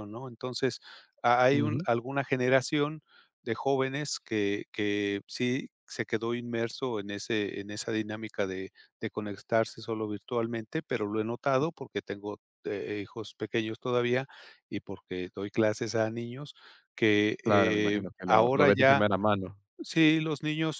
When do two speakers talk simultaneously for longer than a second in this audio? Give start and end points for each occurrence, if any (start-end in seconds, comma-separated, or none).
17.4-19.0